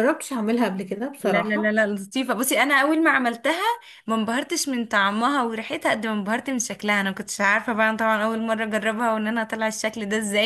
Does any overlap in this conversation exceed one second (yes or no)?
no